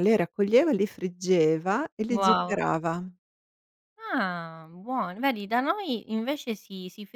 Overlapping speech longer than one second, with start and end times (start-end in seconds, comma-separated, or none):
none